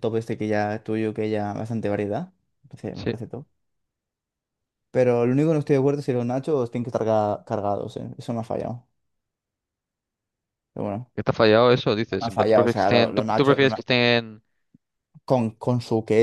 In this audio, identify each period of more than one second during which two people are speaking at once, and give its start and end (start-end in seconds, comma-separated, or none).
12.2-13.8